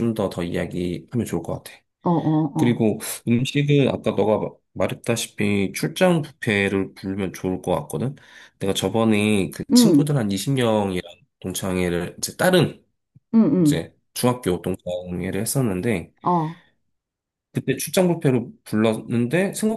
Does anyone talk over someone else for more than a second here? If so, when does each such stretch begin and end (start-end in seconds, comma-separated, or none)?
none